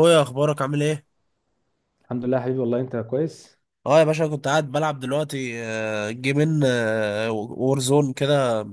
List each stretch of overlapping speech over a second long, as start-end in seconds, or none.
none